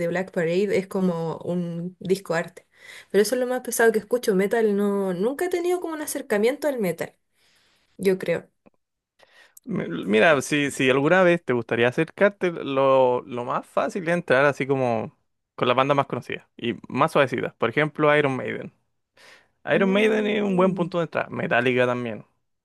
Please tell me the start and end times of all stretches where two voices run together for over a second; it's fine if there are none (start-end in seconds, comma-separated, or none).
19.7-20.9